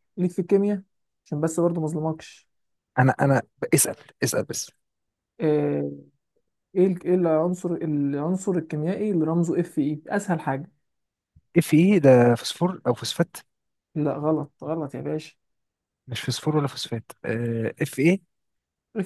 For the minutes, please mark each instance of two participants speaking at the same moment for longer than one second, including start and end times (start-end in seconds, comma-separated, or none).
none